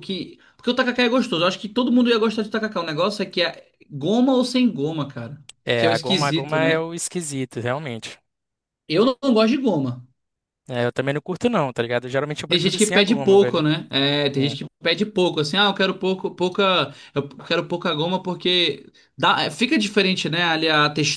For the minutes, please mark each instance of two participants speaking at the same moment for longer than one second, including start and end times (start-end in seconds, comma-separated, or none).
5.6-6.9, 12.5-13.7